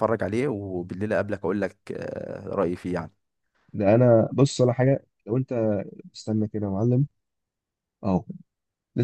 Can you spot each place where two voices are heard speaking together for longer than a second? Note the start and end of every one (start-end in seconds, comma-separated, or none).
none